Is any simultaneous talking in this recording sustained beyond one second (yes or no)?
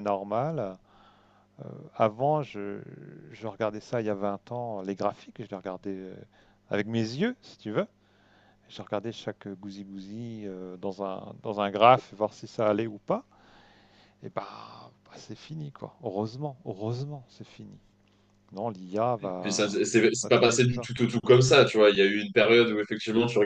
yes